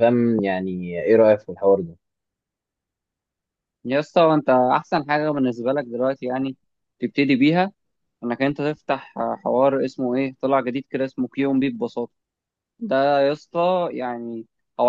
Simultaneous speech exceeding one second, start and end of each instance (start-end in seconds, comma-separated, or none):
none